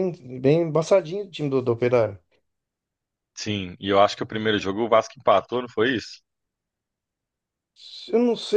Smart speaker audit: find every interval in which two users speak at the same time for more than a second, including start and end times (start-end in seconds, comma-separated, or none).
none